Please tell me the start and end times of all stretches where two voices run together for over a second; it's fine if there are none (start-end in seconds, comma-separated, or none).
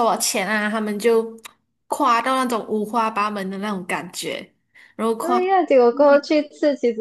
none